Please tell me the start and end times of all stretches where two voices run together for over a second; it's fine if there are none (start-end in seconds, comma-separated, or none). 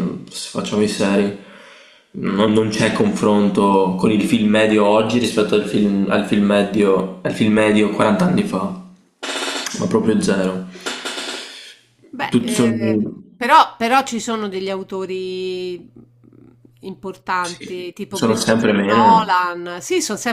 17.4-19.2